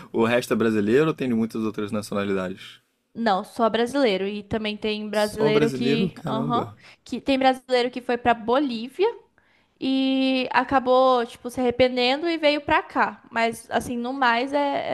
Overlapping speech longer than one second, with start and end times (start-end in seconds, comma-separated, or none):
5.1-6.8